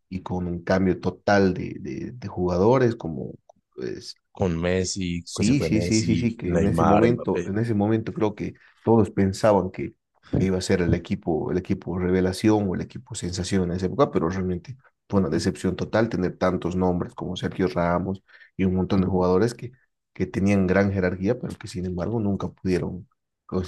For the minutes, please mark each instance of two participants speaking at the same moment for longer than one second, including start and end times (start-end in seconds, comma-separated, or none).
5.2-7.5